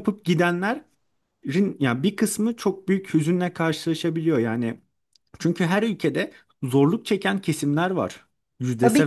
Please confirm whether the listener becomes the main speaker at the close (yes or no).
yes